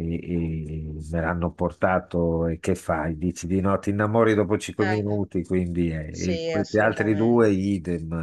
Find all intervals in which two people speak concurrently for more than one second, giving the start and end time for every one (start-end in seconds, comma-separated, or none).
6.1-7.5